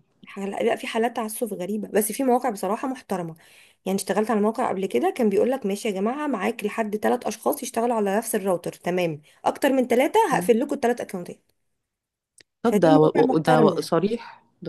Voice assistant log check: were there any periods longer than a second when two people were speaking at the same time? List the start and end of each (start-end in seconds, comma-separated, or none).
12.6-13.9